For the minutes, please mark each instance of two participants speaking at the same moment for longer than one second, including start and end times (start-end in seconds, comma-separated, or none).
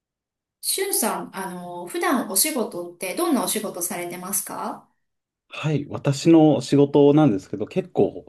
none